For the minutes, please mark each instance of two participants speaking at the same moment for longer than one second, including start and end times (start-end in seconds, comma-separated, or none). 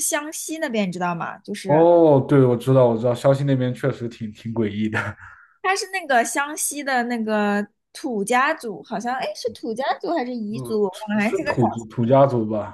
10.5-11.9